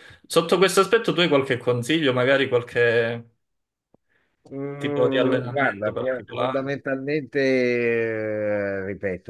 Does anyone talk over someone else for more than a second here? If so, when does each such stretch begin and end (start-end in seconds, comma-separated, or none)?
4.8-6.7